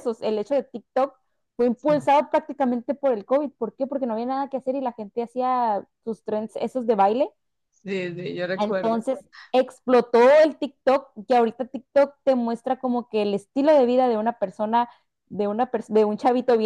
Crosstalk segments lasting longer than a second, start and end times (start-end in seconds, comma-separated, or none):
none